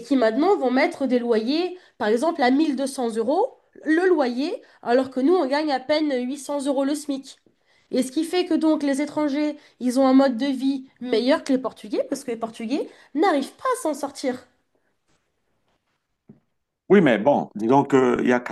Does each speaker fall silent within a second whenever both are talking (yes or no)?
yes